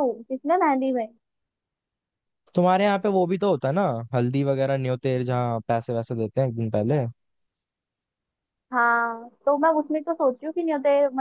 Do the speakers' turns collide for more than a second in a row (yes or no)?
no